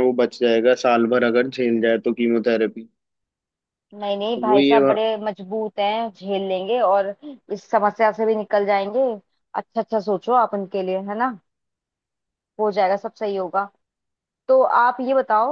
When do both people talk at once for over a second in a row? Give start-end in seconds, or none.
none